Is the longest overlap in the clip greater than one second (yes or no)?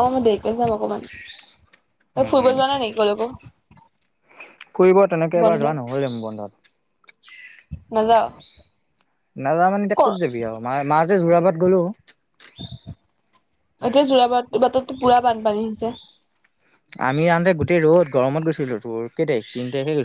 no